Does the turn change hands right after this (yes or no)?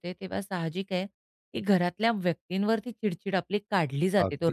yes